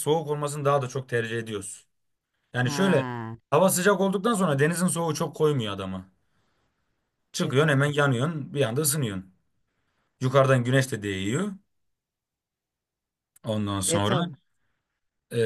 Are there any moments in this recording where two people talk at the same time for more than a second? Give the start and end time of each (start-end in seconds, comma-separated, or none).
none